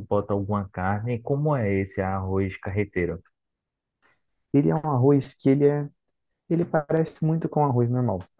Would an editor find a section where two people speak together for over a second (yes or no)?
no